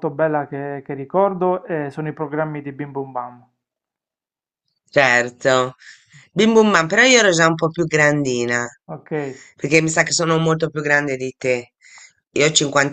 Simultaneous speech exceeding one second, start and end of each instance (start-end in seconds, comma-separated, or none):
none